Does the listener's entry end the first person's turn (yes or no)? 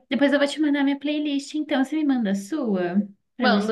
yes